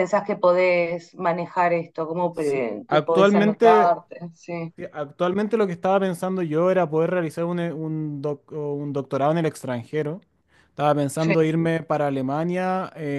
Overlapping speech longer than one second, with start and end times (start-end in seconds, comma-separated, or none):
2.3-4.0